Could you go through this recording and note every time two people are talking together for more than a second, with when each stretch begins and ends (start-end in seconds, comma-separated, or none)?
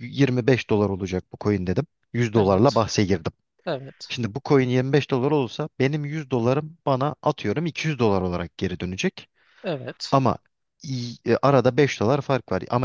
none